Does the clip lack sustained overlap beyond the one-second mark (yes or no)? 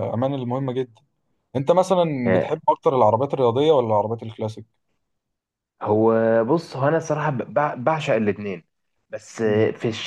yes